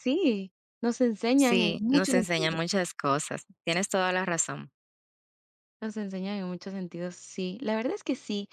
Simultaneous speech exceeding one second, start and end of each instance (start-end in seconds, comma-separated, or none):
1.4-2.6